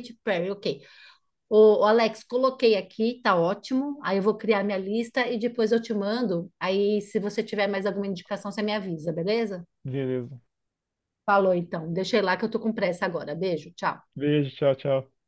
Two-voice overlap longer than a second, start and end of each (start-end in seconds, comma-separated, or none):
none